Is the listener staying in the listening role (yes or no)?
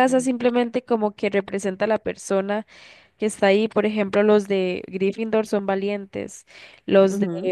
yes